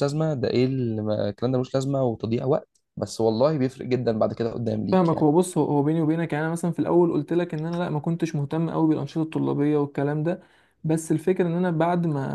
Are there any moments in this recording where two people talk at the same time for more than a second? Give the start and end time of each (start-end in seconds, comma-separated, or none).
none